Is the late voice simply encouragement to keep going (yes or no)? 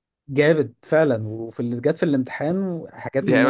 no